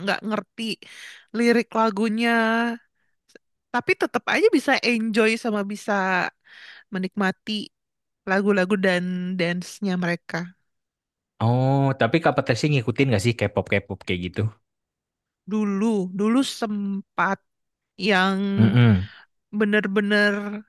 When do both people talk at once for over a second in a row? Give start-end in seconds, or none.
none